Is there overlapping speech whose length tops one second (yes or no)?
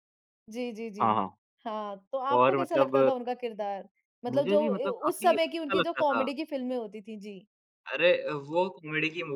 yes